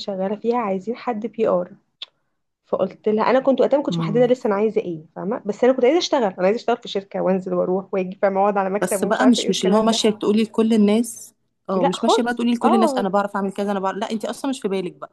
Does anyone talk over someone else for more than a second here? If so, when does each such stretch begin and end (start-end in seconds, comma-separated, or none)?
8.8-10.0, 11.8-13.1